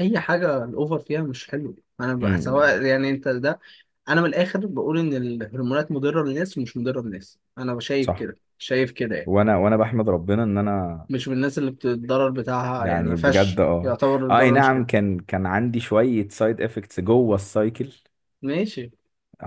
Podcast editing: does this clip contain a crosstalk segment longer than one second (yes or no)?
yes